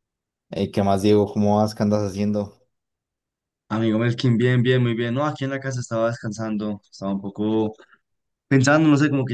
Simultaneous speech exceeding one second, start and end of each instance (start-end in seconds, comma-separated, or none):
none